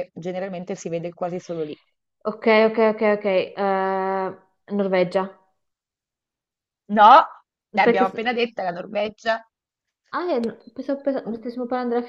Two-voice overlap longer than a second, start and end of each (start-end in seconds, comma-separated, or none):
none